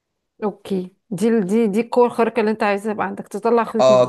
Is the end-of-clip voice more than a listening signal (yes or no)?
yes